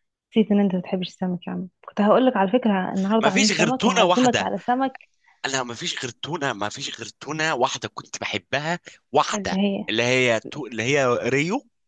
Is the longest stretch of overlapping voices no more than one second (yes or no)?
no